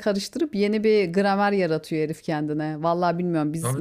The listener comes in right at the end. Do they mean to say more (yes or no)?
no